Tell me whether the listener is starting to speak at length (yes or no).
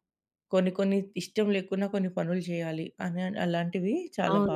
yes